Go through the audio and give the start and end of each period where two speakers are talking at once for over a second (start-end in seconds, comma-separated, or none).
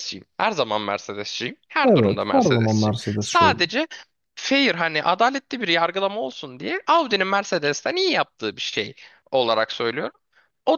1.8-3.6